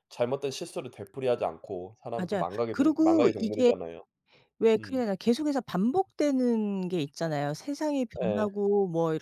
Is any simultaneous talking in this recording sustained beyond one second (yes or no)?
yes